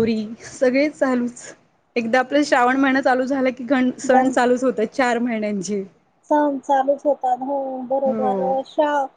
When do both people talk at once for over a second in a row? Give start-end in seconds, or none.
none